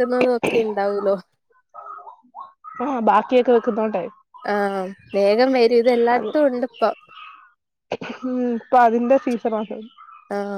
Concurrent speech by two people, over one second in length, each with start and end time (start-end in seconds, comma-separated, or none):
none